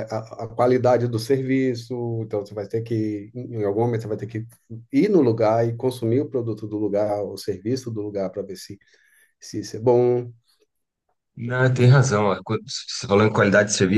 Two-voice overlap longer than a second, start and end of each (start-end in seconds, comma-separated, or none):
none